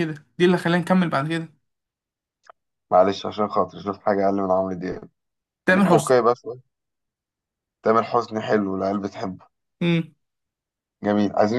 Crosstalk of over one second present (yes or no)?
no